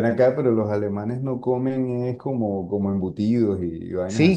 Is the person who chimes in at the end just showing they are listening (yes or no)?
no